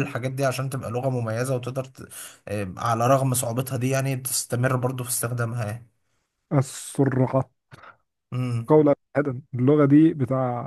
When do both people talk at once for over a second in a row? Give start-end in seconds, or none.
none